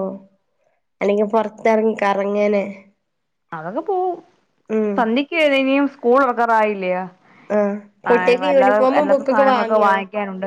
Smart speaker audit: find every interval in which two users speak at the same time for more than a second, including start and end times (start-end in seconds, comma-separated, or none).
8.1-9.9